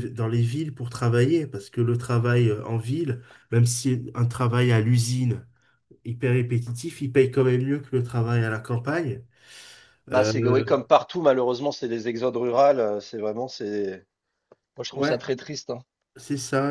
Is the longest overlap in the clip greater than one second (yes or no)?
no